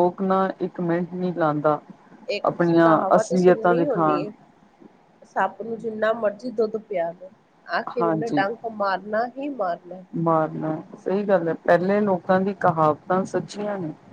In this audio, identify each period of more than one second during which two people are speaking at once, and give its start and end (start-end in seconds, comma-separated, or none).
none